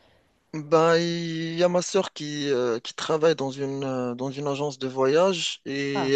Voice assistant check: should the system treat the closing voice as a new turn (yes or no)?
no